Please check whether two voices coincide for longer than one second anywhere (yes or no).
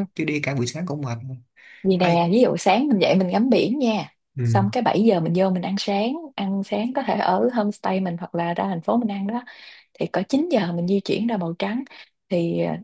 no